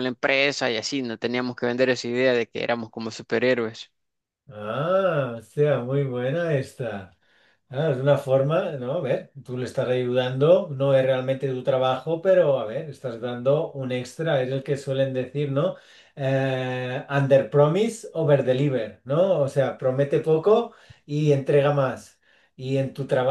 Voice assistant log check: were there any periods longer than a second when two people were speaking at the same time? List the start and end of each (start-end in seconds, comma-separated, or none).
none